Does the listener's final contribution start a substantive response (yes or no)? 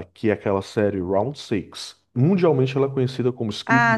yes